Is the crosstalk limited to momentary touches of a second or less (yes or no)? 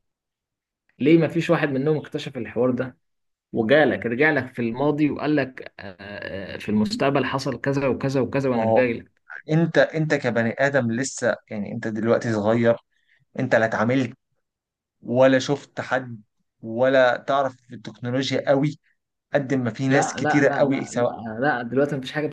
no